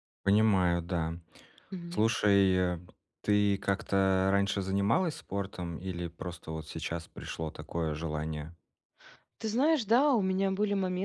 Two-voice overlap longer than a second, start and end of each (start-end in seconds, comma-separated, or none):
none